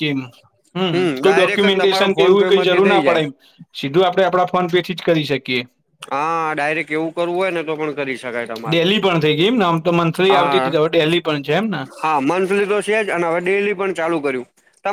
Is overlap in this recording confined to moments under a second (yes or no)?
no